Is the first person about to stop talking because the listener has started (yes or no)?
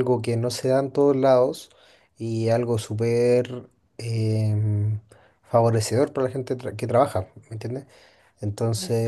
no